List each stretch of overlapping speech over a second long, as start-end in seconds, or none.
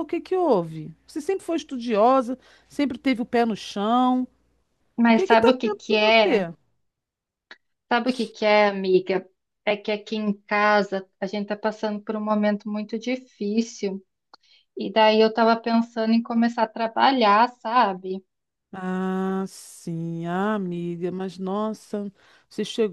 5.1-6.5